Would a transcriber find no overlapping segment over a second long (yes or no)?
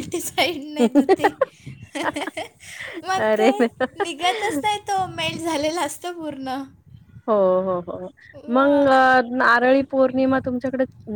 yes